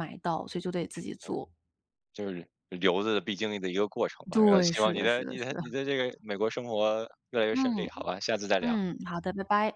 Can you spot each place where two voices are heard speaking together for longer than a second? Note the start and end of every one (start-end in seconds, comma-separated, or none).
4.3-5.6